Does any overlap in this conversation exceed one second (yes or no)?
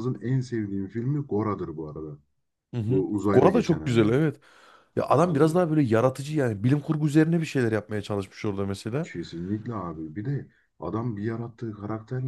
yes